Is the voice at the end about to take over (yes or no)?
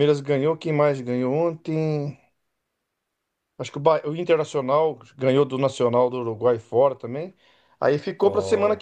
no